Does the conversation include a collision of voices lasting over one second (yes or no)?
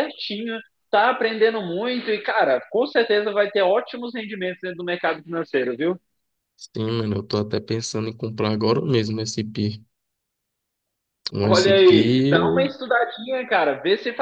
yes